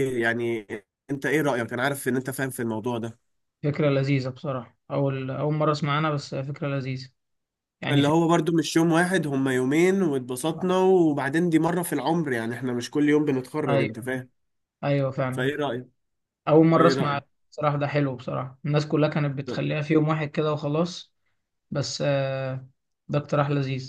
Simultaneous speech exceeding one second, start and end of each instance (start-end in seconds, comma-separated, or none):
none